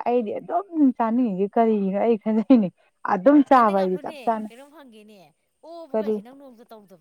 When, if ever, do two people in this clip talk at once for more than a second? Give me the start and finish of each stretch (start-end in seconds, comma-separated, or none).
none